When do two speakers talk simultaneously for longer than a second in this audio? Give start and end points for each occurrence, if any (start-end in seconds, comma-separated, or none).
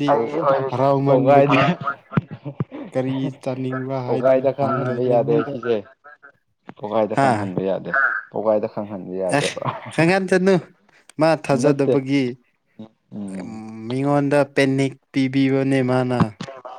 4.1-5.5